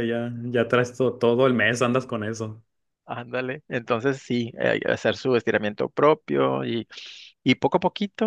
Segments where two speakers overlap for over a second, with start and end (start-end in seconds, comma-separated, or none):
none